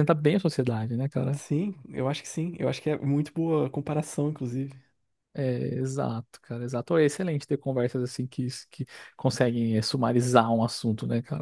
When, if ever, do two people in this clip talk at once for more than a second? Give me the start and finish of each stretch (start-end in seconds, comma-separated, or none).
none